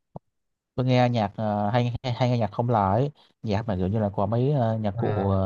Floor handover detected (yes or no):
no